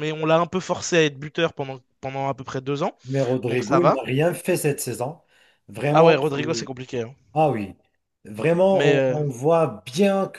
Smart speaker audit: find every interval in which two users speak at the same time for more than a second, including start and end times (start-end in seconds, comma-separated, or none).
none